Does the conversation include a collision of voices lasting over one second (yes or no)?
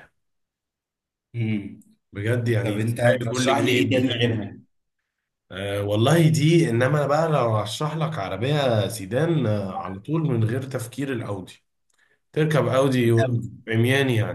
yes